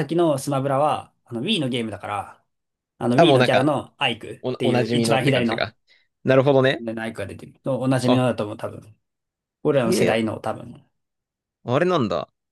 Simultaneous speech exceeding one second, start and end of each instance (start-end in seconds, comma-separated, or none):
4.4-5.7